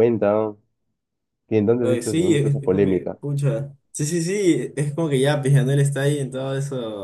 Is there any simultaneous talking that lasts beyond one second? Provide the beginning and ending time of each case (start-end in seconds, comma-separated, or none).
1.8-3.2